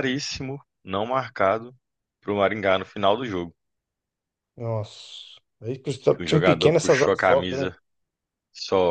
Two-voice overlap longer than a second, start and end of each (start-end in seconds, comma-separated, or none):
6.1-7.7